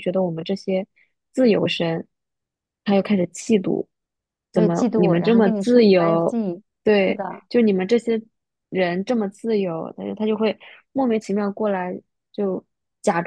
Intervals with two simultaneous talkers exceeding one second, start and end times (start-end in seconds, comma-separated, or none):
4.5-6.4